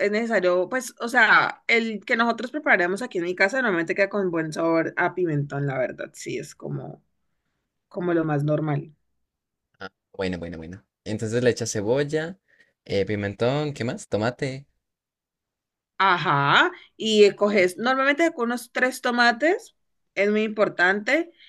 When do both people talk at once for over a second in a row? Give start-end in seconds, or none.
none